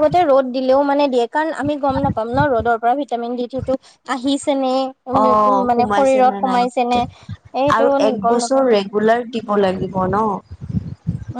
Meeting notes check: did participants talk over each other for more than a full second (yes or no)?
yes